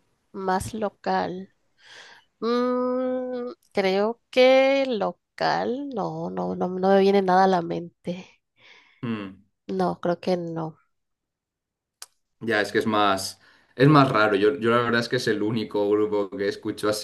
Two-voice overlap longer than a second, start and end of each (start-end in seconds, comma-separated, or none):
none